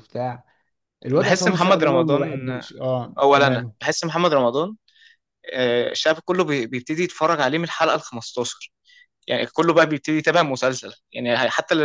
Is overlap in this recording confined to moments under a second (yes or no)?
no